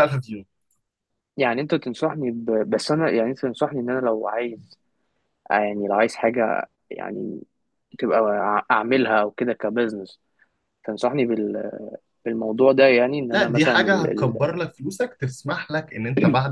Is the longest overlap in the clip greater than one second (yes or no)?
yes